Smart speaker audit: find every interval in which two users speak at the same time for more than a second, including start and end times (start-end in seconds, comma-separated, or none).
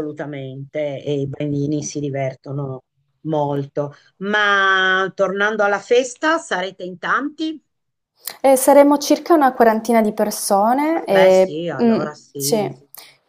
10.9-12.6